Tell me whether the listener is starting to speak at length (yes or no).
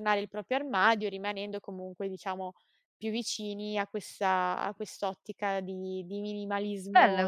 yes